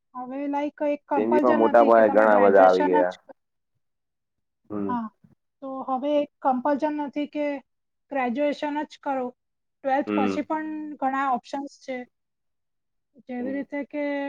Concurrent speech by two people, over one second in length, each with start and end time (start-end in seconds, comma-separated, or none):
1.1-3.1